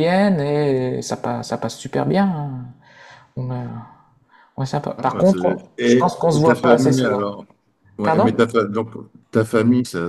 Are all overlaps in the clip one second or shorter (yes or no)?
no